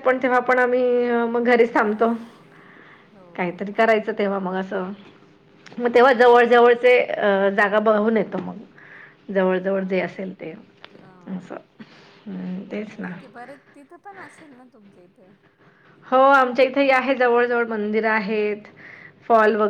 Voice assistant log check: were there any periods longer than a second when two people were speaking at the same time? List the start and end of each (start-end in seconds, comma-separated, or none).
none